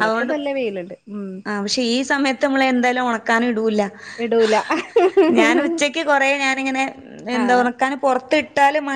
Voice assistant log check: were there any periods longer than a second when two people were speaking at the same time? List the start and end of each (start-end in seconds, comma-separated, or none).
none